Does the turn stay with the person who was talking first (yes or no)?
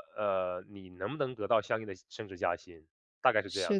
no